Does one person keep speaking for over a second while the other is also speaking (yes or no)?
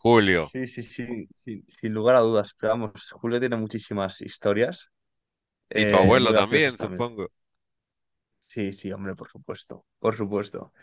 yes